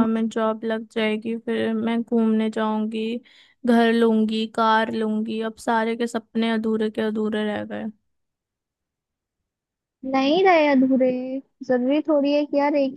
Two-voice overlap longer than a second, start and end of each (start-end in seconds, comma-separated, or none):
none